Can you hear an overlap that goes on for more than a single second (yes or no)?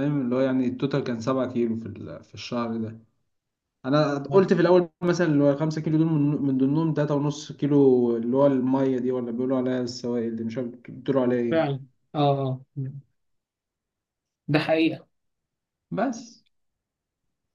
no